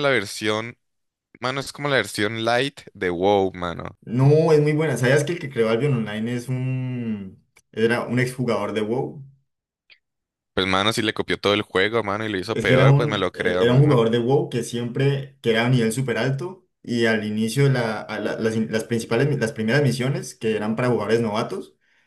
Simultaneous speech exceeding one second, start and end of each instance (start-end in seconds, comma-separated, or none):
12.5-14.0